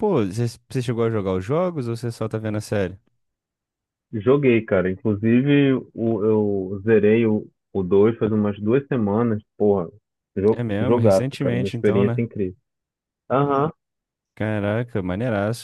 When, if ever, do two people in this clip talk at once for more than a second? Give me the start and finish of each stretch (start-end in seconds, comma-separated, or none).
10.5-12.3